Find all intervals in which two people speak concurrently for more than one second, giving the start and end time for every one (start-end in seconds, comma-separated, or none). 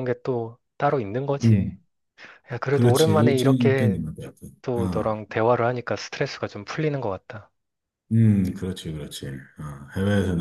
2.7-4.0